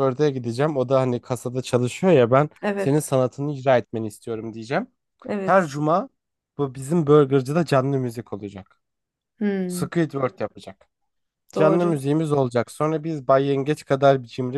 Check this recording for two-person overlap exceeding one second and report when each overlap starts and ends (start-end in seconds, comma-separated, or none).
none